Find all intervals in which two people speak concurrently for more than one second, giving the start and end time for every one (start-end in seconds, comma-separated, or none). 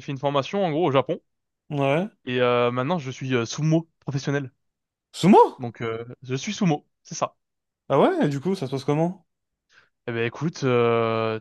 none